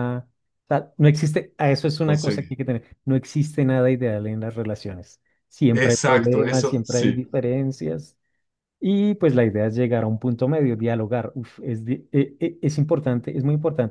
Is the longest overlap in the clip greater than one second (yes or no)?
yes